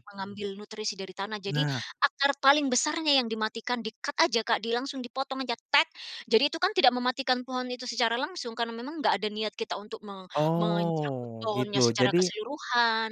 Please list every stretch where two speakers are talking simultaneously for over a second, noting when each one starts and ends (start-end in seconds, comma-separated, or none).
10.3-12.3